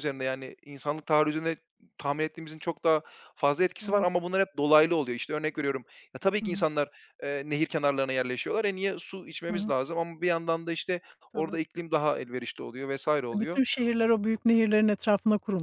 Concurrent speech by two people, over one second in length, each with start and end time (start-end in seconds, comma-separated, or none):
none